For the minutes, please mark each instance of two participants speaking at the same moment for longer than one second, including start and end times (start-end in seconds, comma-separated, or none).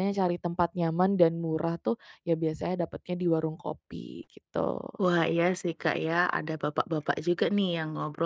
none